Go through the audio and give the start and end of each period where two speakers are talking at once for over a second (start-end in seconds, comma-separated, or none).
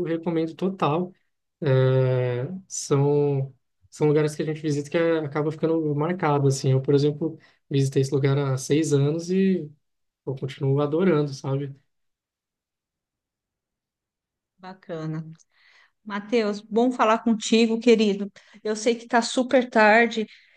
none